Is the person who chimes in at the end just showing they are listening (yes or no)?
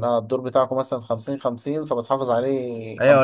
no